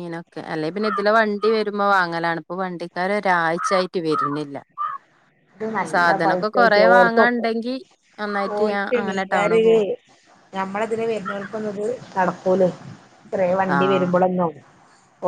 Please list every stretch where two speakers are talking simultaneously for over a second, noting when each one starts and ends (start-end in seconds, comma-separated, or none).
5.9-7.5